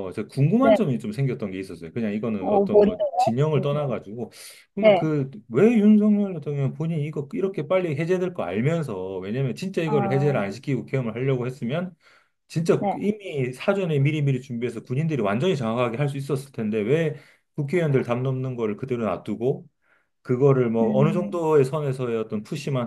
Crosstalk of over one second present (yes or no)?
yes